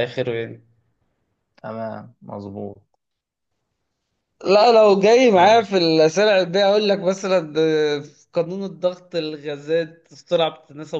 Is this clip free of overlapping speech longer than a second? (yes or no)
yes